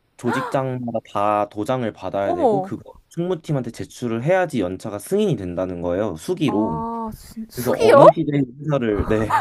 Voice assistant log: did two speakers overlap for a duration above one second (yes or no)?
no